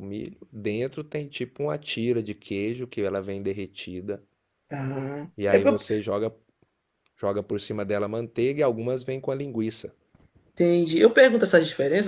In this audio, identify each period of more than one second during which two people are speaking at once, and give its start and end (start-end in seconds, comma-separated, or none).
none